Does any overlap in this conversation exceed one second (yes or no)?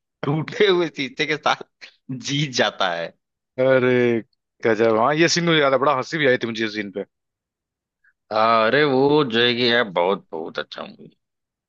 no